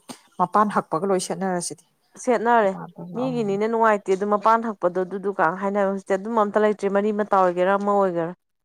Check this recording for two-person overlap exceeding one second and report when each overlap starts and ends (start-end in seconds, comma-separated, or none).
none